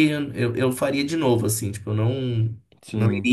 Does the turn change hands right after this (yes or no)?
no